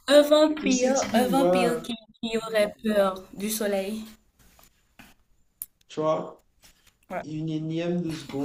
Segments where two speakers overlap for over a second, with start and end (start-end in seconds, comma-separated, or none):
0.6-1.8